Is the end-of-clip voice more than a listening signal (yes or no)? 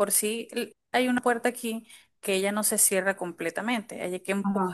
no